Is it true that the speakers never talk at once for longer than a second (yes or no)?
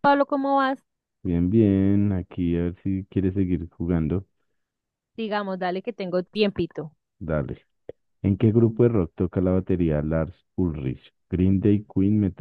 yes